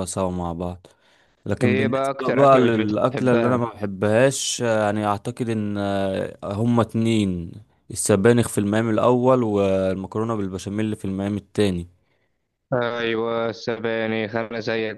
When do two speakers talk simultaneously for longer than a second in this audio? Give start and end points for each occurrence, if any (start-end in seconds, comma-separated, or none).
1.6-3.6